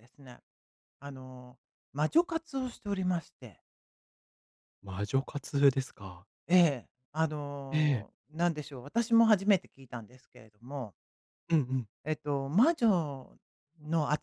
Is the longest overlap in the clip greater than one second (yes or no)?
no